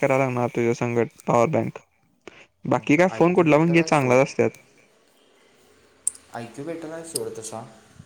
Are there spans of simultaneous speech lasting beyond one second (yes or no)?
yes